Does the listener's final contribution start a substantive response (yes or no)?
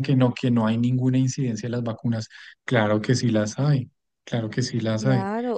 yes